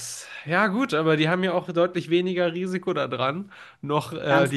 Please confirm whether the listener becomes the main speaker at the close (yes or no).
yes